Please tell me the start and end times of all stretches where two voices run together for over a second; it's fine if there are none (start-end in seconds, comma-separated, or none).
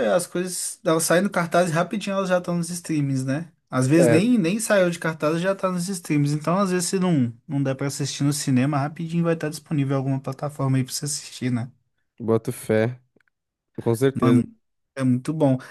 none